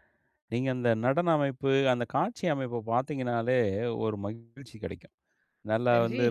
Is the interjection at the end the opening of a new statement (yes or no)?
no